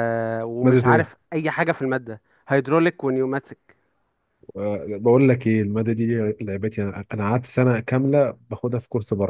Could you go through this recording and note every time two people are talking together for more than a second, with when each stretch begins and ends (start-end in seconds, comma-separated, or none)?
none